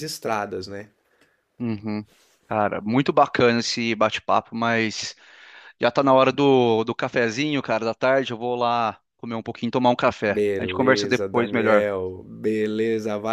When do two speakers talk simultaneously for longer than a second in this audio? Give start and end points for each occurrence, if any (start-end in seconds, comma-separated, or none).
10.3-11.9